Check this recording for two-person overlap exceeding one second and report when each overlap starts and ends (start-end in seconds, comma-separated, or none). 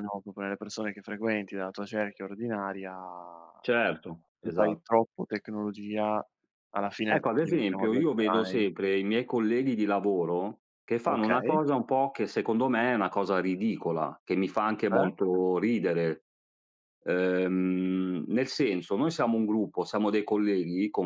7.1-8.7